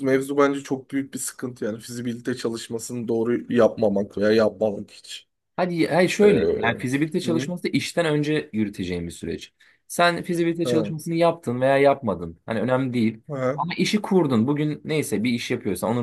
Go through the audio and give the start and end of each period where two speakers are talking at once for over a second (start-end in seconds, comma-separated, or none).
none